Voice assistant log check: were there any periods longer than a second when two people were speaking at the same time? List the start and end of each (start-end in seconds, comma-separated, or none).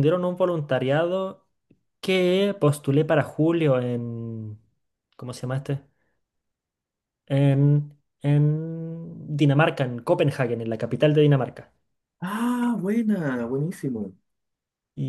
none